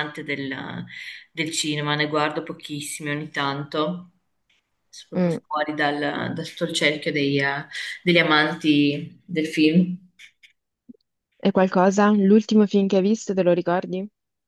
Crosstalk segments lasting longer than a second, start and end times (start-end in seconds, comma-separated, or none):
none